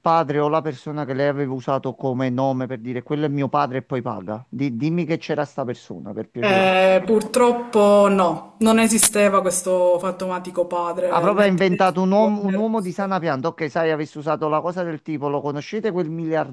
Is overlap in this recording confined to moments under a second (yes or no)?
no